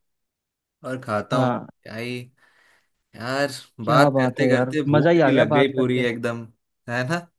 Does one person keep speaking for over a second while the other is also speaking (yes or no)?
yes